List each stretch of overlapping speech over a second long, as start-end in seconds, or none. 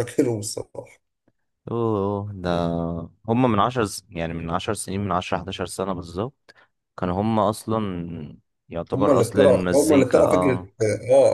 8.9-10.7